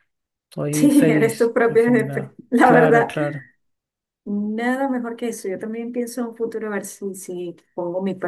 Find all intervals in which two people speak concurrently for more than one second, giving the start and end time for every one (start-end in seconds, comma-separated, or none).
0.7-3.1